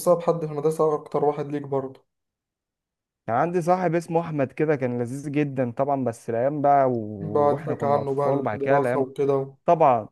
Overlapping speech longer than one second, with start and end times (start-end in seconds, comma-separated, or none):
7.2-9.1